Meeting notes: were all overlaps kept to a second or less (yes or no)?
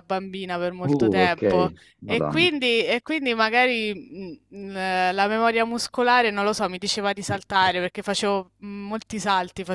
no